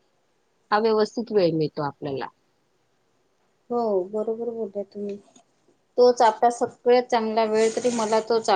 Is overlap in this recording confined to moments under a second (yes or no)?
yes